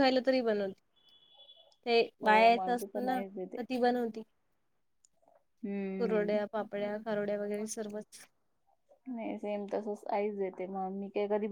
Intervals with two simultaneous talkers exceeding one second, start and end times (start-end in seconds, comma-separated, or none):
2.2-3.6